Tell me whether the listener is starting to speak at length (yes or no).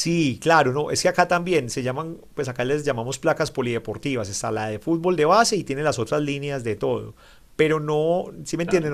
no